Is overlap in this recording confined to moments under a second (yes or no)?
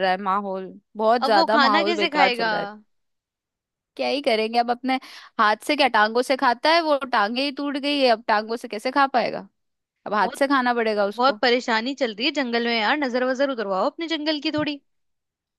no